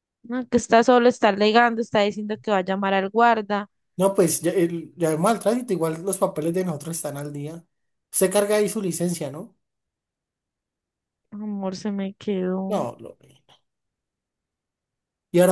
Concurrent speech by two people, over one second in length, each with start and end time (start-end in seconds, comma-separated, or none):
none